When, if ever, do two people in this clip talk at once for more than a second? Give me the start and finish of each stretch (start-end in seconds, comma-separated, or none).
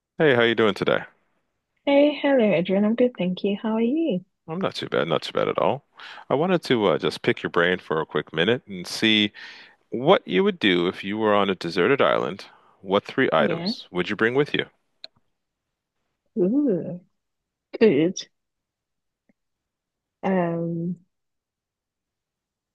none